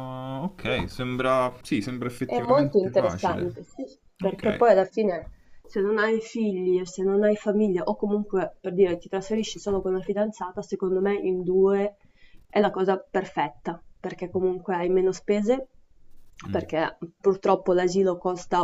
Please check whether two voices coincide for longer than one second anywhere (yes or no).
yes